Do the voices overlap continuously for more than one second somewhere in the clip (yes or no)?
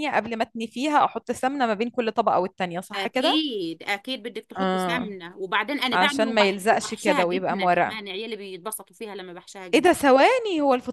yes